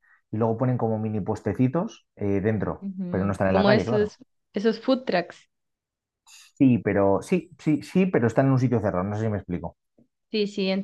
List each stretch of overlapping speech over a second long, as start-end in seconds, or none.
2.8-4.2